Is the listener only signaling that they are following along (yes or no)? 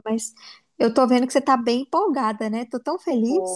no